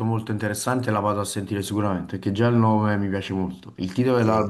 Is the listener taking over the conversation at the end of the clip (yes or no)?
no